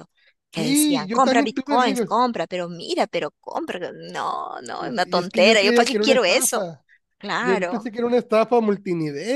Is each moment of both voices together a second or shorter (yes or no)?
no